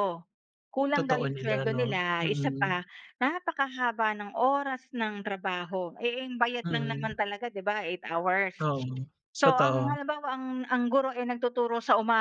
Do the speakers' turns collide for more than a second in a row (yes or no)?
yes